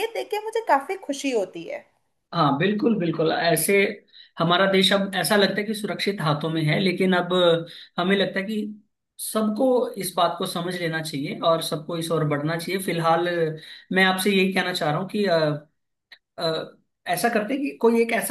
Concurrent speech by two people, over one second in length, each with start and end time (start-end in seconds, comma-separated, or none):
none